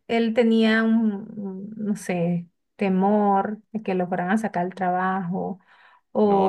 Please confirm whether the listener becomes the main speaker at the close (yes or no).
no